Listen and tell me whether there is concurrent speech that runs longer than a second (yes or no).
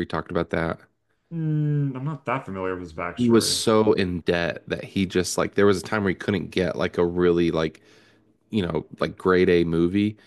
no